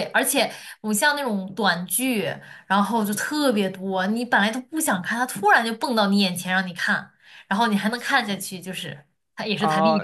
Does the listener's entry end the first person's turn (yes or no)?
yes